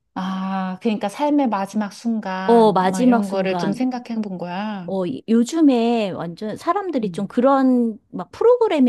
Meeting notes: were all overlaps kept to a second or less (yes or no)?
no